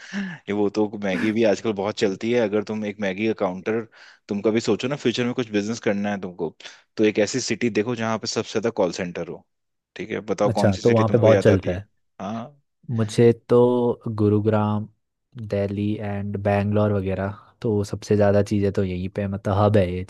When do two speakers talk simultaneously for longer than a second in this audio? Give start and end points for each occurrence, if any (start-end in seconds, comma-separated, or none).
10.5-11.8